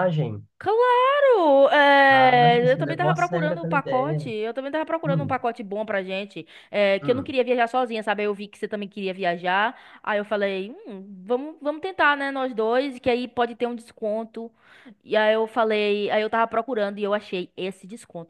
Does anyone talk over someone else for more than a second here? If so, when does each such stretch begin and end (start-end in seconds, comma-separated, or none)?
2.1-4.3